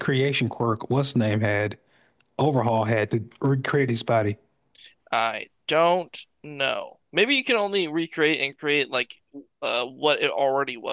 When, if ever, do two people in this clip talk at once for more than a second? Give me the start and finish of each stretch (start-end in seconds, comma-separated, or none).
none